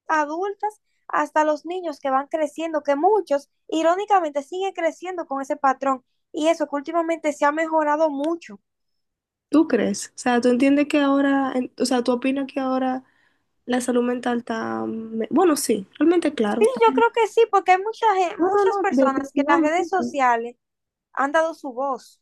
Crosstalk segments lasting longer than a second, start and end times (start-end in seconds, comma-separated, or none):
18.4-20.2